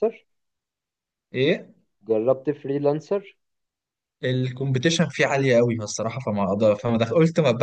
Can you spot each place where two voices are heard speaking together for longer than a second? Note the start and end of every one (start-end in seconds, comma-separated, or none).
none